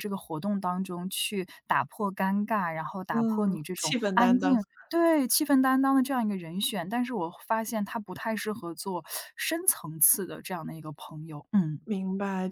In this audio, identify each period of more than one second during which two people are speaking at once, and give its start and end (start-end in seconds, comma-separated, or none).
3.1-4.6